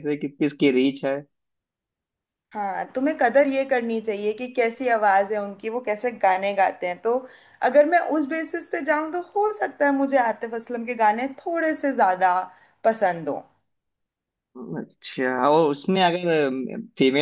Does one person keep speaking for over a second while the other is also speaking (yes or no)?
no